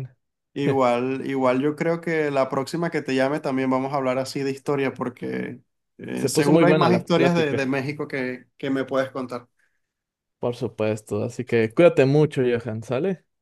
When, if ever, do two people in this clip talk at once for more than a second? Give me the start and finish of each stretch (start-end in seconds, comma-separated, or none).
6.2-7.7